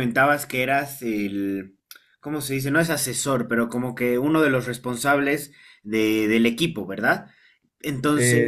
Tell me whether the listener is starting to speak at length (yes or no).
yes